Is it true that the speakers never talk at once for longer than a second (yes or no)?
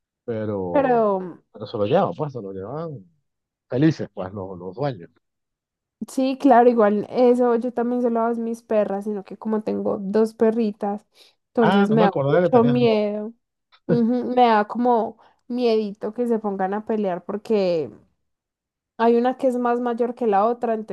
no